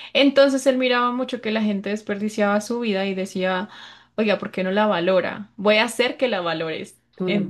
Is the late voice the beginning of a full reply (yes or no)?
yes